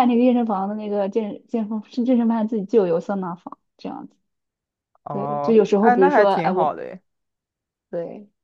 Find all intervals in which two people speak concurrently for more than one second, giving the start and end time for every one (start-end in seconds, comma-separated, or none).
5.1-6.8